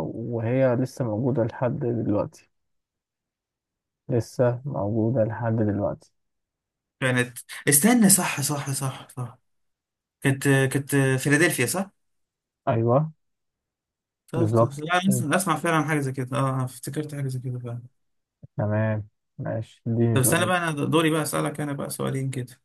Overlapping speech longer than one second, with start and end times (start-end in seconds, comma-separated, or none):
none